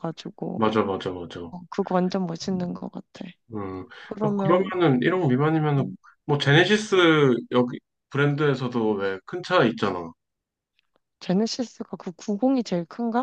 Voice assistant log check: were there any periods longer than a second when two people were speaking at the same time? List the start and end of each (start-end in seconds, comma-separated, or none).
none